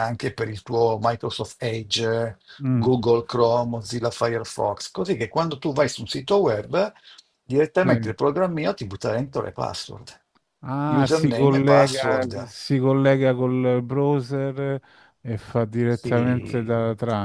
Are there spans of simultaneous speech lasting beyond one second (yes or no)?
yes